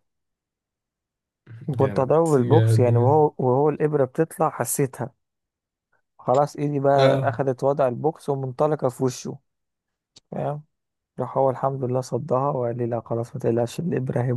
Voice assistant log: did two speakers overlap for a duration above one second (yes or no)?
yes